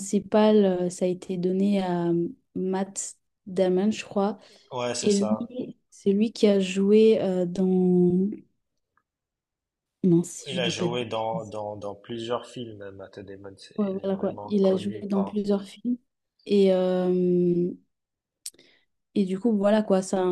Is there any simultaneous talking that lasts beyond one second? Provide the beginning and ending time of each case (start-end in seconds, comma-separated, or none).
13.8-15.4